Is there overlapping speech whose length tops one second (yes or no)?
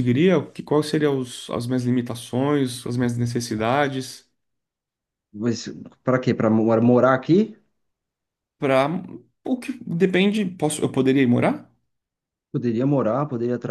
no